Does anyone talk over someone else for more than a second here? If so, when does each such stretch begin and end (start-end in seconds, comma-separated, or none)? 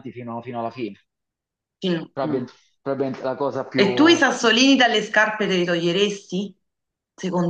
none